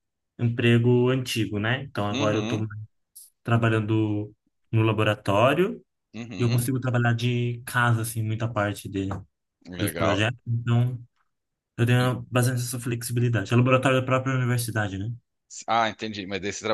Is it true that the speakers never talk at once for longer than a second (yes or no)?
yes